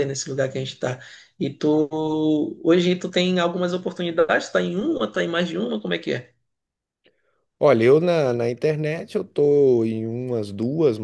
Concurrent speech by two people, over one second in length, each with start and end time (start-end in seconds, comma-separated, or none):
none